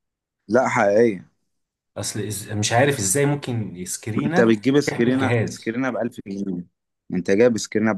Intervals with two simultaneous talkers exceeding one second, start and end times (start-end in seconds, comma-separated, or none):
4.2-5.8